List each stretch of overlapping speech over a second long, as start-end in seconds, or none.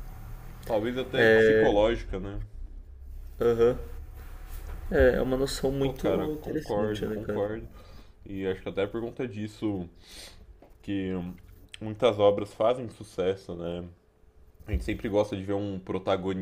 5.8-7.5